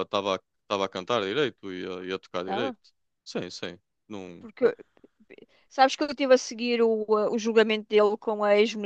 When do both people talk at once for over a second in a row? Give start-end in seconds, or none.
none